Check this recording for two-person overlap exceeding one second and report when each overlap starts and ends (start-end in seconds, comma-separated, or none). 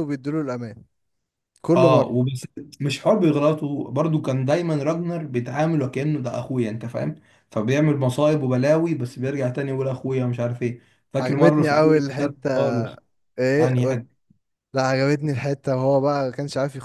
11.2-12.5